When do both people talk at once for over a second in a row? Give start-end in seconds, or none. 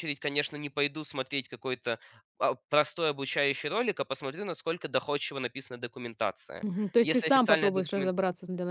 6.6-8.2